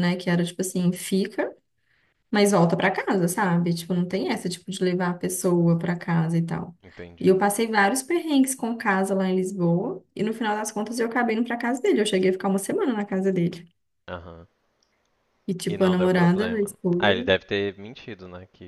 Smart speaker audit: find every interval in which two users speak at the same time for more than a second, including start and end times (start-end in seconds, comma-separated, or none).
15.7-17.1